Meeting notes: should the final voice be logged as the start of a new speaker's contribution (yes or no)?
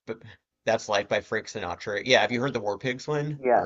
yes